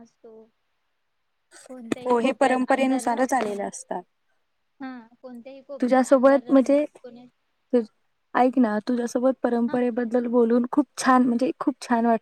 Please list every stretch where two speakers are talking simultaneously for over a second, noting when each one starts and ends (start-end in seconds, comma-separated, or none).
2.0-3.7